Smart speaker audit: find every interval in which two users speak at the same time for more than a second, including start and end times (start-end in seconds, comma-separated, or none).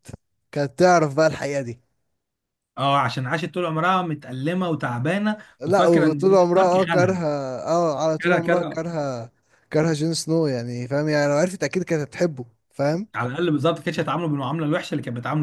5.6-7.2